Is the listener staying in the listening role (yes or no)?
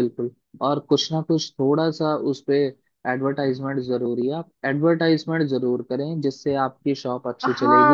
no